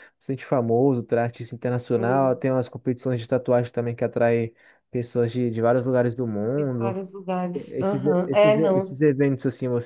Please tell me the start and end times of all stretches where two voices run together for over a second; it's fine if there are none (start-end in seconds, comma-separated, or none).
7.7-9.0